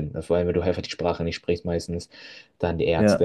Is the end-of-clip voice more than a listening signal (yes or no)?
no